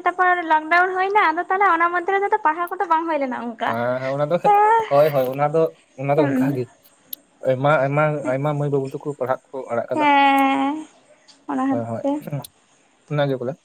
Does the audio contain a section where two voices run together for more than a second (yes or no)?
no